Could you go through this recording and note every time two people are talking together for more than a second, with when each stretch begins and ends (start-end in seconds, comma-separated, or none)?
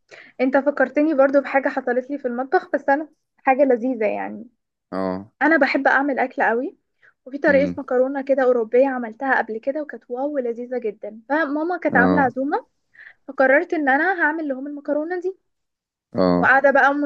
none